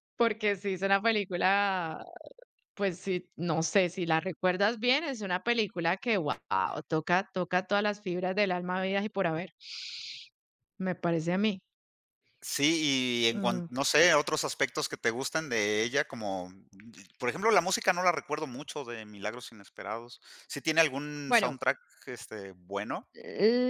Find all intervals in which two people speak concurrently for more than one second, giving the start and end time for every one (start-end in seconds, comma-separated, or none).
none